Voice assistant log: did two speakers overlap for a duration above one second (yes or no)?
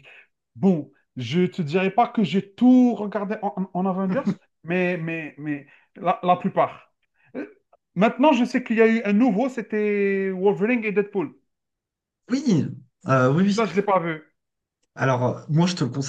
no